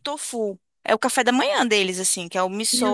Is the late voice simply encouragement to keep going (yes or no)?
yes